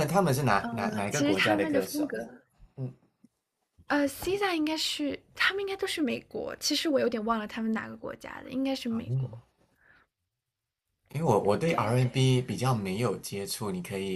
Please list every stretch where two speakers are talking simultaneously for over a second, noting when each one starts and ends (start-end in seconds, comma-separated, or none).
0.7-2.1